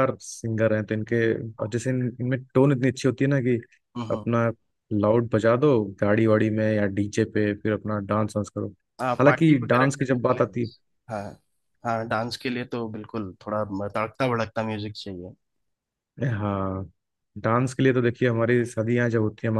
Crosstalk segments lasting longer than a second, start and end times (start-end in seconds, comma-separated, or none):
9.2-10.7